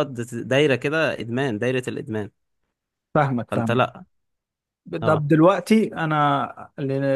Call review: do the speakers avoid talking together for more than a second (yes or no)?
yes